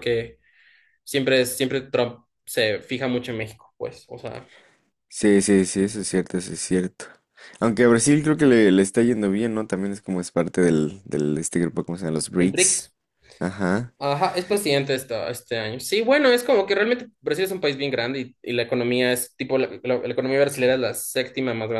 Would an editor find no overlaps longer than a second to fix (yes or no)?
yes